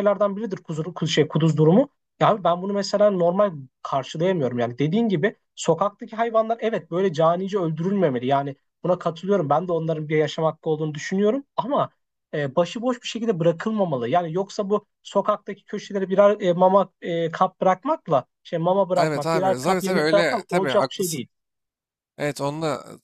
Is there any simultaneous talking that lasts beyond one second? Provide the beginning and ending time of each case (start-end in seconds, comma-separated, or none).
19.0-21.2